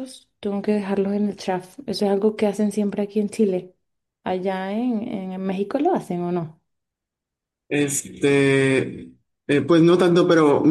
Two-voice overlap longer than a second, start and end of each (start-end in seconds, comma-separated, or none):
none